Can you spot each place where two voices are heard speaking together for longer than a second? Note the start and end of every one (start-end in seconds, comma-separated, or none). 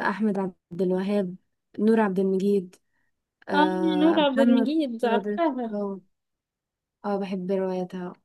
3.5-5.8